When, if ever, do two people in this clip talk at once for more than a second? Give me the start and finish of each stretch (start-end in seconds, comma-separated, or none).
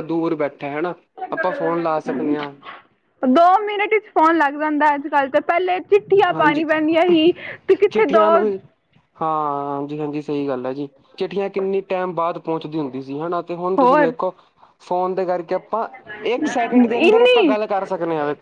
none